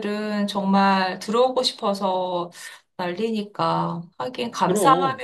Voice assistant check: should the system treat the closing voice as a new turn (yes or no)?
no